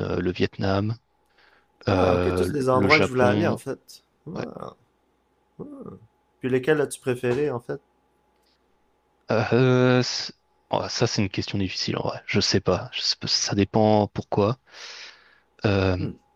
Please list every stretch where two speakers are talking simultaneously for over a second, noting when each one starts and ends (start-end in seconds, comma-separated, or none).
1.9-3.6